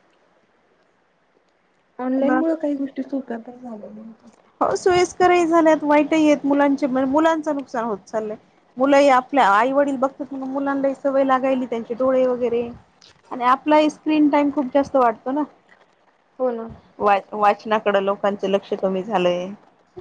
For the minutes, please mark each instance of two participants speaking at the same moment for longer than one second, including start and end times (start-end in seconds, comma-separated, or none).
none